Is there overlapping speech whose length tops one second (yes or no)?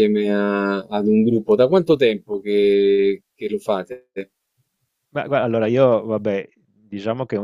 no